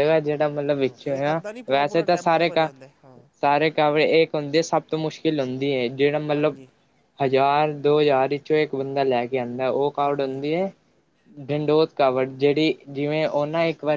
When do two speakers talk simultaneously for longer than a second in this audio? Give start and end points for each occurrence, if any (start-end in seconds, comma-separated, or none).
0.8-2.7